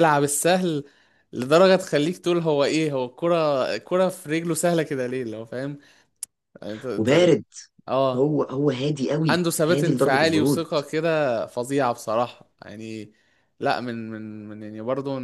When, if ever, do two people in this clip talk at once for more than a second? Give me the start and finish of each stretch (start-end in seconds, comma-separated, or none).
9.3-10.6